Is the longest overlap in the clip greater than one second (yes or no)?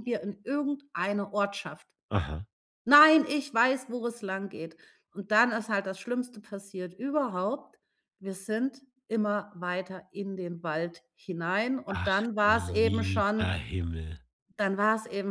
yes